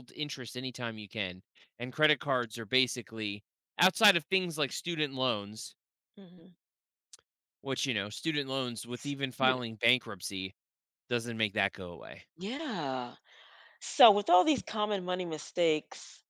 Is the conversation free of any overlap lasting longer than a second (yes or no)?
yes